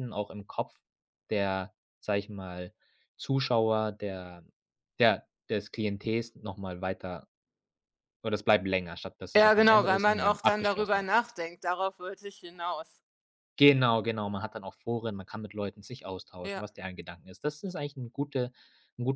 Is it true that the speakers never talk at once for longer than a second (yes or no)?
no